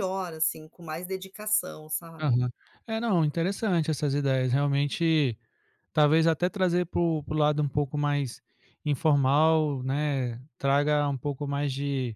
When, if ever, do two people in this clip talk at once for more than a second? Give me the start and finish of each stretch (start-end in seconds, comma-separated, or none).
none